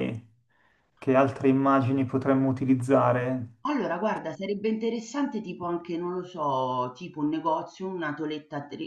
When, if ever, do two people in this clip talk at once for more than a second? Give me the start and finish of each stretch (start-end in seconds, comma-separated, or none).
none